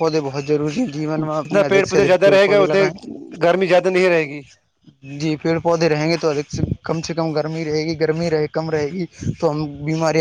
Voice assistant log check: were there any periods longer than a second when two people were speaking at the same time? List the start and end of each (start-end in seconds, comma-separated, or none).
1.4-2.8